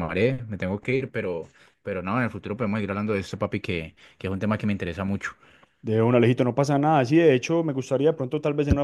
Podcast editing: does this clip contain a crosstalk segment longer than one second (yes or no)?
no